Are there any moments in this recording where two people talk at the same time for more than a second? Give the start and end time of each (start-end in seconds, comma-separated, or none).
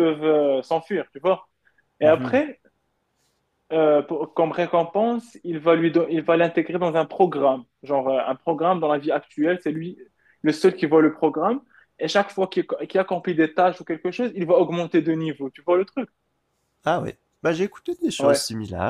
none